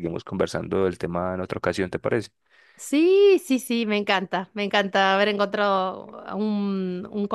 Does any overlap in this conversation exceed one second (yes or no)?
no